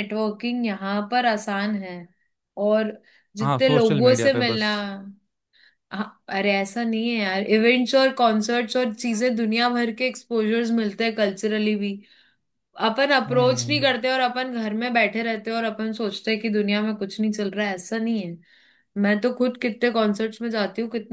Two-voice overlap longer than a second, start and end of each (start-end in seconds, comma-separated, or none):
3.4-4.7